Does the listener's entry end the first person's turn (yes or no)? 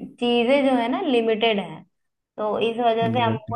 no